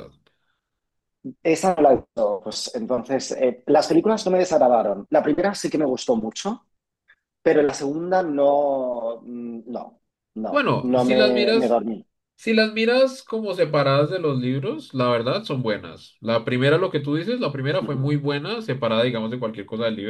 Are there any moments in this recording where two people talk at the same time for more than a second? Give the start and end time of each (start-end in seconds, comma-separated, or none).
10.5-11.8